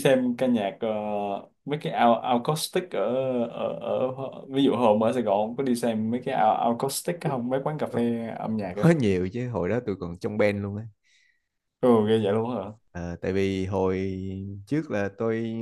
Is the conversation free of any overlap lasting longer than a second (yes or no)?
yes